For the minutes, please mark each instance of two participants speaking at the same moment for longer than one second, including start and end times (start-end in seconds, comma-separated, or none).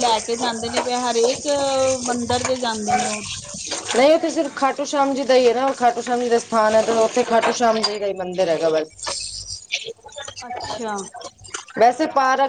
none